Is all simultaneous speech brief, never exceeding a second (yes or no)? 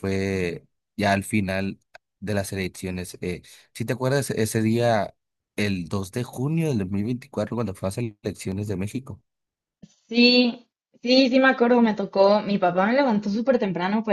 yes